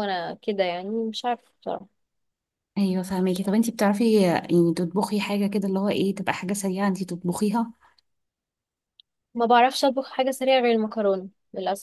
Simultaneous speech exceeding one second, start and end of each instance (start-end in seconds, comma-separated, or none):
none